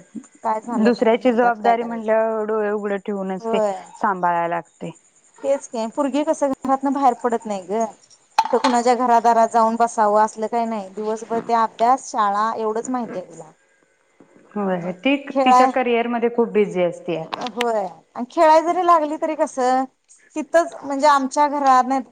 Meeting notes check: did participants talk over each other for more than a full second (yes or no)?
yes